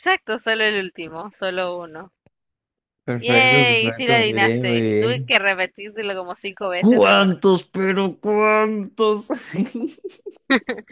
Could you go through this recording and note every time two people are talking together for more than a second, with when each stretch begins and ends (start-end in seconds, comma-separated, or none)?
3.2-5.3